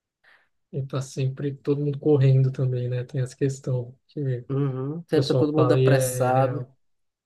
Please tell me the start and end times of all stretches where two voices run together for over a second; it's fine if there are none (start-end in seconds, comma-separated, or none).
5.1-6.7